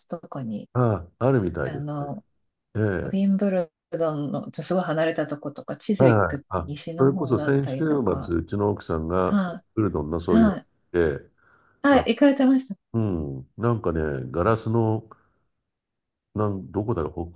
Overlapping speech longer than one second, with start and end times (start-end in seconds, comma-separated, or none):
6.0-7.9